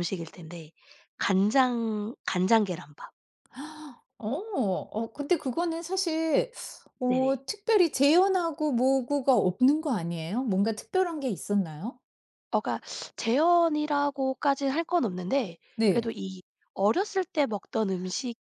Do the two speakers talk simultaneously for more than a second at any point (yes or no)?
no